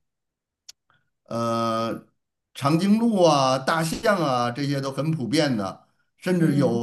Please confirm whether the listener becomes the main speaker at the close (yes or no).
no